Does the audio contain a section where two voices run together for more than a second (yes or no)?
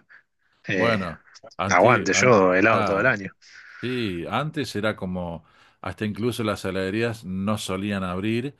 yes